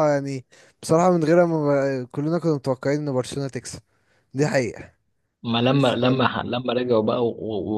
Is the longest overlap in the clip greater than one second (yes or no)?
no